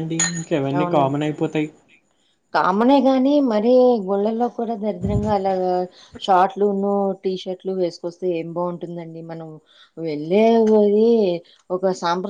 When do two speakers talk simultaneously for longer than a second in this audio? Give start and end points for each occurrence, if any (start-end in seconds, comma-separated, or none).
none